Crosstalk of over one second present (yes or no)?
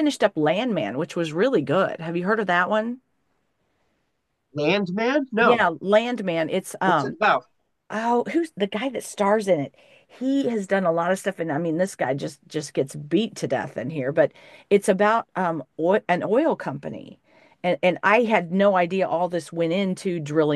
no